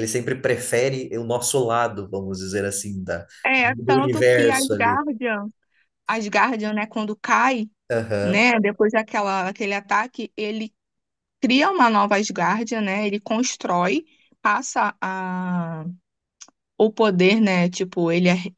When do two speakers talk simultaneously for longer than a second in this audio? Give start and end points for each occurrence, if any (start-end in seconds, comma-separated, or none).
3.5-5.0